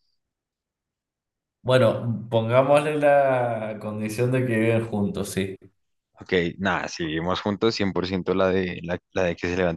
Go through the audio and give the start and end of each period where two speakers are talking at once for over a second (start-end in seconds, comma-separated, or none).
none